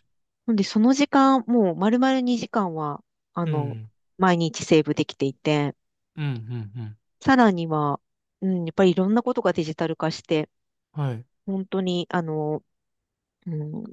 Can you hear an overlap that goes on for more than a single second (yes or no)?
no